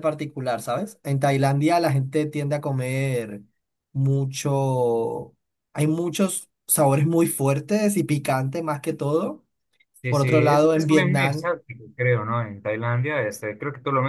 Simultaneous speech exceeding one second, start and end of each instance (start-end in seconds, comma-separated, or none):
10.1-11.5